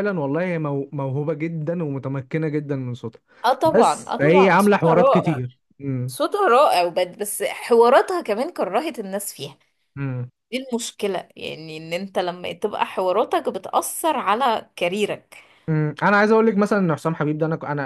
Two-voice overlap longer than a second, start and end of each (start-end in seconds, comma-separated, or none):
3.6-5.4